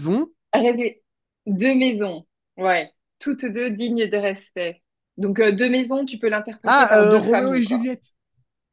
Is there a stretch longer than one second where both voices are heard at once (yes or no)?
yes